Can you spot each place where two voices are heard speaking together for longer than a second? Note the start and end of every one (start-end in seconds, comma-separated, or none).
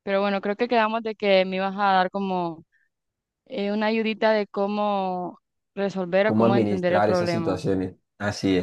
6.2-7.6